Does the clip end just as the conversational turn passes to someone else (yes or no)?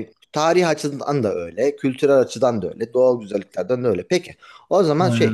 no